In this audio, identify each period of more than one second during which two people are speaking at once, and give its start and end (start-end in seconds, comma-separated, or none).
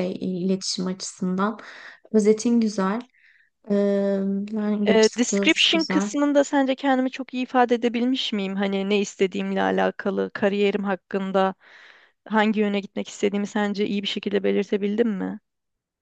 4.9-6.1